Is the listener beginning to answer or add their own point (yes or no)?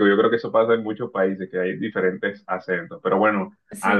no